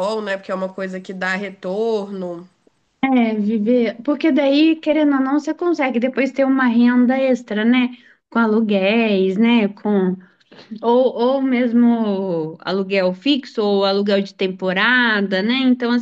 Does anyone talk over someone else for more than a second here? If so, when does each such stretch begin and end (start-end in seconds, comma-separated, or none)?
none